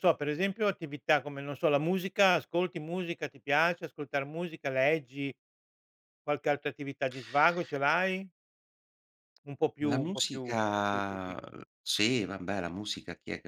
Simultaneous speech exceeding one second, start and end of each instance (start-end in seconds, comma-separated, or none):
9.8-11.3